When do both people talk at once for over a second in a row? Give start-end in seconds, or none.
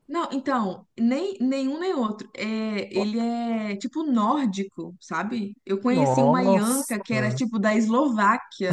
5.9-7.4